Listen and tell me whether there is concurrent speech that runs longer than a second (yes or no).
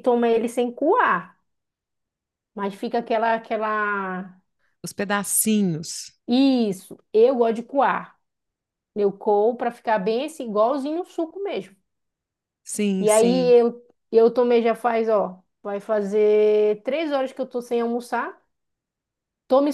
no